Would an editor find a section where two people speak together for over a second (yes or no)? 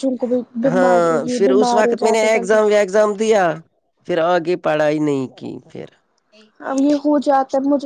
yes